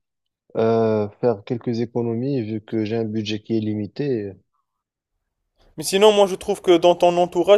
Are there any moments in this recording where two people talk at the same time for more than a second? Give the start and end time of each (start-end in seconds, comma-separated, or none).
none